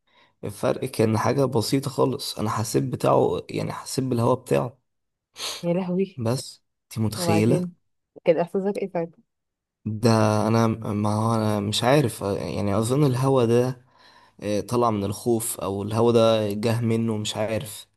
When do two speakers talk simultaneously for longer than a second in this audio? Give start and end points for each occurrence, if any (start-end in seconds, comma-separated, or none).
none